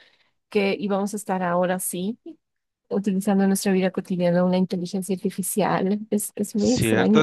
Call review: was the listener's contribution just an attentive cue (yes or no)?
no